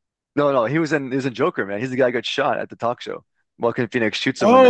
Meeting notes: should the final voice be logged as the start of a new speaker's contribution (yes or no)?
yes